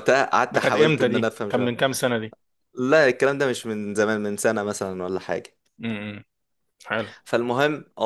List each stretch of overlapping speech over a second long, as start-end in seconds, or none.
0.5-1.8